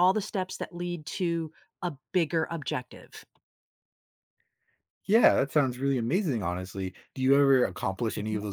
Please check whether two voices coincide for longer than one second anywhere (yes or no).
no